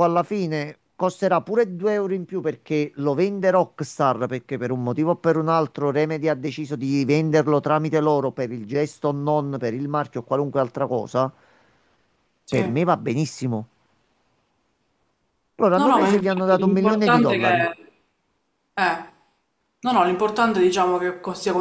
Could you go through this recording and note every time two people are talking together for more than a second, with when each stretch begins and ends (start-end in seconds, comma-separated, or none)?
15.7-17.7